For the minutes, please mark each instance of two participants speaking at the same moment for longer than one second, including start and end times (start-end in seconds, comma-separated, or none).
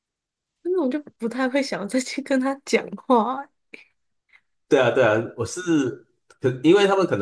none